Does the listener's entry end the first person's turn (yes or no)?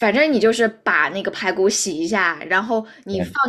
no